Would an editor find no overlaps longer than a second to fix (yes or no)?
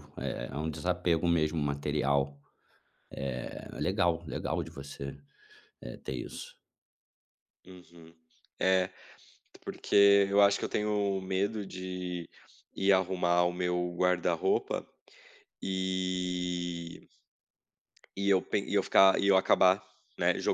yes